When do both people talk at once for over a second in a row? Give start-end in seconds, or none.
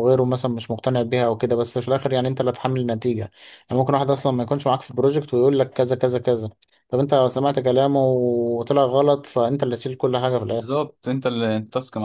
none